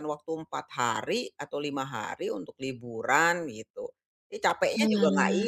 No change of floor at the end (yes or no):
yes